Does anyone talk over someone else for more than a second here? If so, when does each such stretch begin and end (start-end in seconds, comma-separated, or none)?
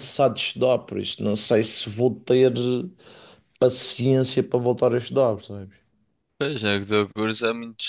none